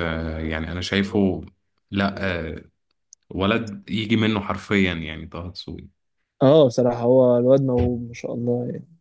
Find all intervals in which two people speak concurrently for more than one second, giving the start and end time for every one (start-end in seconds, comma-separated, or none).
none